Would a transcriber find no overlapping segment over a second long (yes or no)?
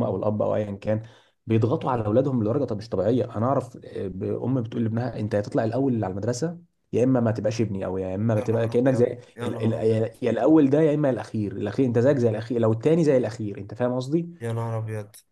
no